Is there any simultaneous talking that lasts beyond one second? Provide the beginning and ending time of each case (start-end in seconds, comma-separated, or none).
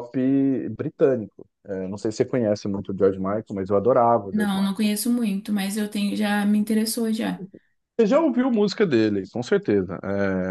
none